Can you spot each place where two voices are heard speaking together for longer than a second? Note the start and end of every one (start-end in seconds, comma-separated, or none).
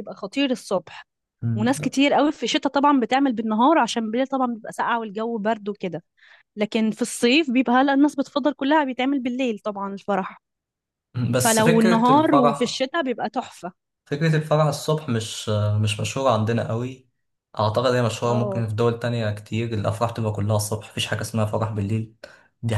11.3-12.8